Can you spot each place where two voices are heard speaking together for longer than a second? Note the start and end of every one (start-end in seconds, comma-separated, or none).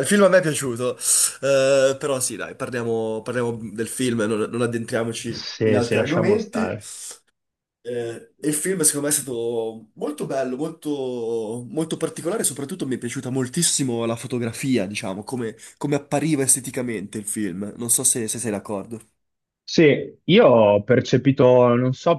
5.3-6.8